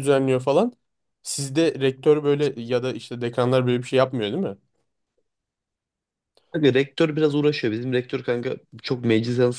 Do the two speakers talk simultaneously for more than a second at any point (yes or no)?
no